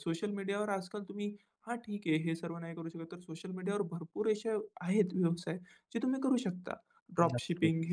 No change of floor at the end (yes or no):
yes